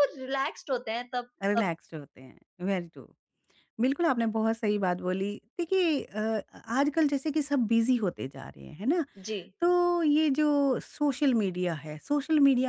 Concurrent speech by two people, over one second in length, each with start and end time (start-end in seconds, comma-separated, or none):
none